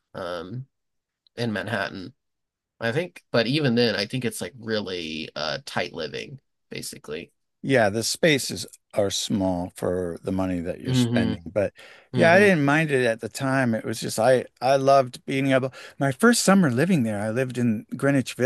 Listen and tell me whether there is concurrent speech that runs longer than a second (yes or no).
no